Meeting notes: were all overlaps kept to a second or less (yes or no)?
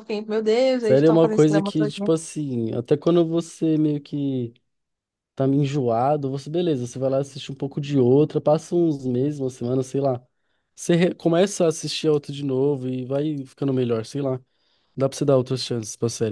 no